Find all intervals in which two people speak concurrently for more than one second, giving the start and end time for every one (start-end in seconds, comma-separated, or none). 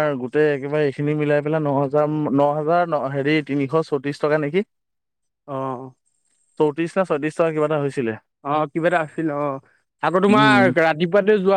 none